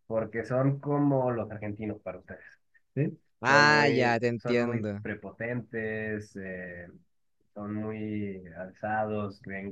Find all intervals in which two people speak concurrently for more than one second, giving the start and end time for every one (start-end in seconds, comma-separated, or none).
3.4-5.0